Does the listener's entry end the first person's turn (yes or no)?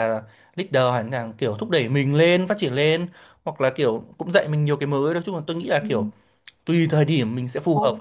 yes